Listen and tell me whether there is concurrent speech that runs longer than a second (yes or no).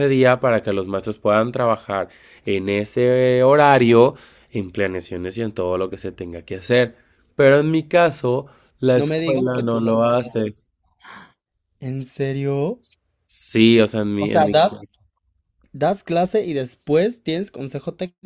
yes